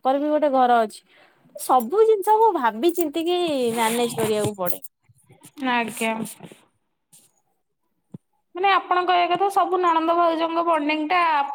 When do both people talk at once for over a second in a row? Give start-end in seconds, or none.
none